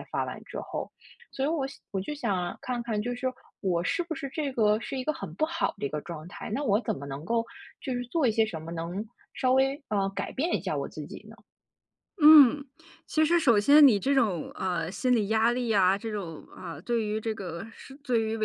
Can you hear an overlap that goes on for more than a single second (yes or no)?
no